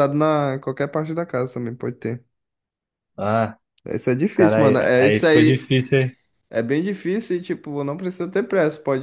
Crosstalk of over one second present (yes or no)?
yes